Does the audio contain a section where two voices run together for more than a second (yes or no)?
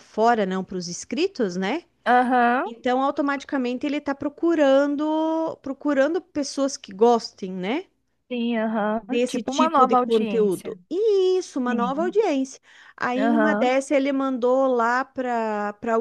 yes